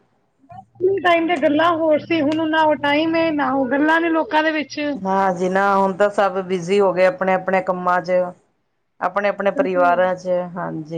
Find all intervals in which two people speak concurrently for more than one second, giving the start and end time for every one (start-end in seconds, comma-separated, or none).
none